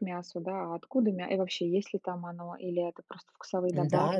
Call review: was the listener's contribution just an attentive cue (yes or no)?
no